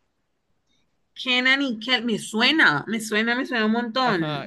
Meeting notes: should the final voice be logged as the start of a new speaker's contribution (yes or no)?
yes